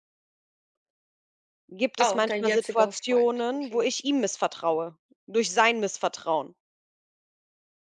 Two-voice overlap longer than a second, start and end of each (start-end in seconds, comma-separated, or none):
2.0-3.9